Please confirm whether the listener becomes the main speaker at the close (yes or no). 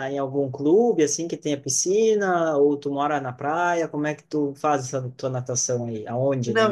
yes